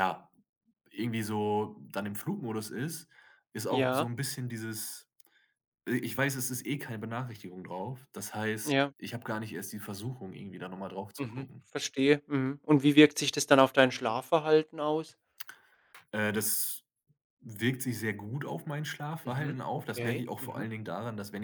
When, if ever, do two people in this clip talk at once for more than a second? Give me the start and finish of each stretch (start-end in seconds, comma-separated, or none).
19.2-20.7